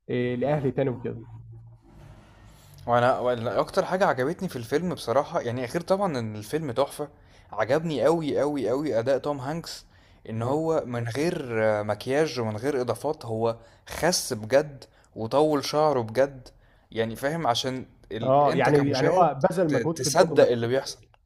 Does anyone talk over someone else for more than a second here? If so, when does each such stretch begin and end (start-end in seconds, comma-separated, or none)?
18.2-20.5